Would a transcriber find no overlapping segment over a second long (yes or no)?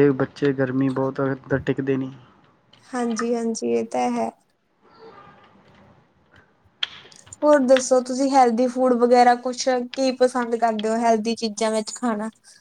yes